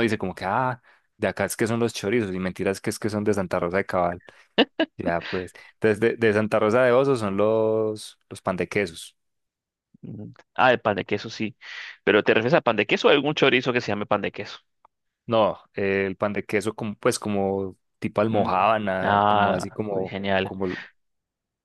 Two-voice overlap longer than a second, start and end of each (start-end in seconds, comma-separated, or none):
18.3-20.5